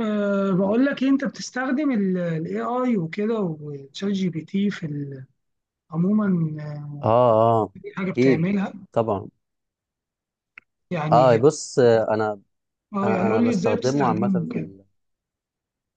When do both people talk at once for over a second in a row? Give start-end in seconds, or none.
13.0-14.7